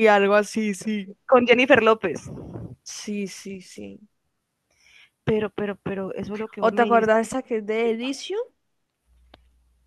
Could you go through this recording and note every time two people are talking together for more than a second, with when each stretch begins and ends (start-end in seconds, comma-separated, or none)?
none